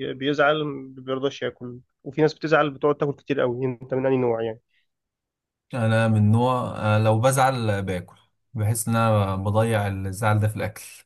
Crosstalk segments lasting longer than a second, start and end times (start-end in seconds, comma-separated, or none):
none